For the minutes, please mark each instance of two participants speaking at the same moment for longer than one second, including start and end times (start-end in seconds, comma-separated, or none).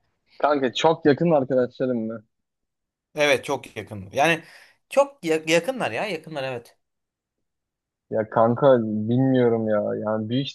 none